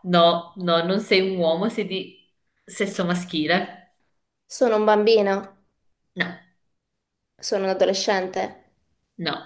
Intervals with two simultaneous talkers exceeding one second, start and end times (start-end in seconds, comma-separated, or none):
none